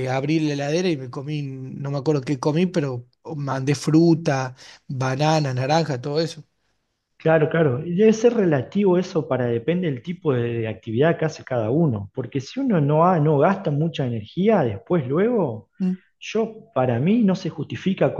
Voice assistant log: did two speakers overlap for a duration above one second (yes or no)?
no